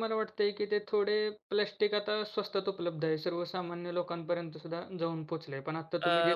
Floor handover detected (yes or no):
no